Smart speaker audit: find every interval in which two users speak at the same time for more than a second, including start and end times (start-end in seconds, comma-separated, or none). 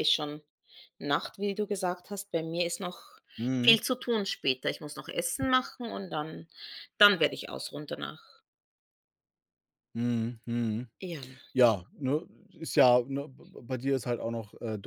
none